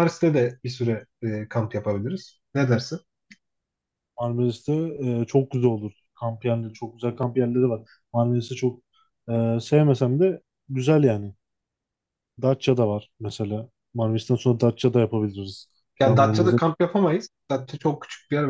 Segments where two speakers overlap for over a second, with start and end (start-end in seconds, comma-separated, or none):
none